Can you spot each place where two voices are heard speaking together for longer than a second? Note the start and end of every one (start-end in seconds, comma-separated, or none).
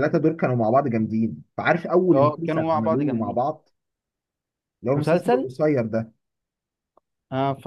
2.1-3.4